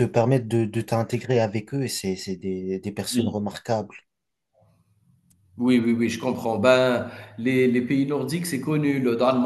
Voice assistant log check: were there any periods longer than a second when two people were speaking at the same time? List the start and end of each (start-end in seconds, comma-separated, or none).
none